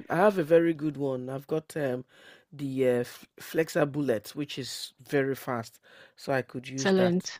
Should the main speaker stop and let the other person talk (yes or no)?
yes